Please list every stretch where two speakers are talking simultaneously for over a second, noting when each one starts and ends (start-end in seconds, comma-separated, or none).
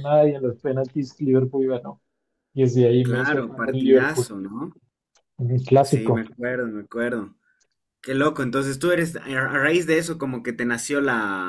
3.0-4.3